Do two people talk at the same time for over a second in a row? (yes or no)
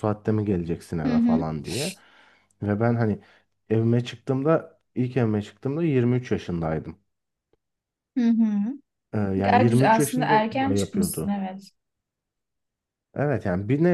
yes